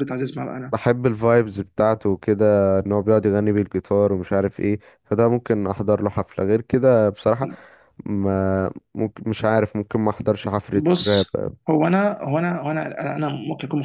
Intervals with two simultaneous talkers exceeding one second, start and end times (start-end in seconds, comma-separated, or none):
none